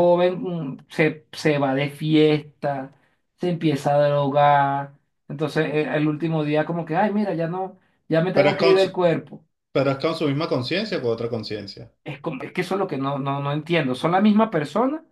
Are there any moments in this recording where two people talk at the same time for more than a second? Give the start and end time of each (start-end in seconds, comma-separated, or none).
none